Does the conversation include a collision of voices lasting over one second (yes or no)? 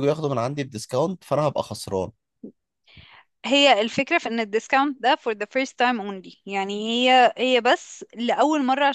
no